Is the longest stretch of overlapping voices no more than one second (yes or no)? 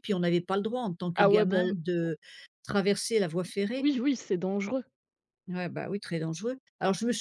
yes